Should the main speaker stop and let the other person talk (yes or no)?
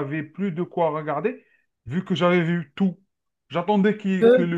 no